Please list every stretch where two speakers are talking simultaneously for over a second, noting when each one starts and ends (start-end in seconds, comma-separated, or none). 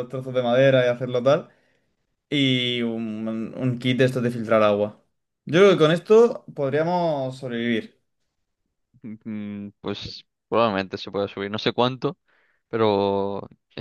none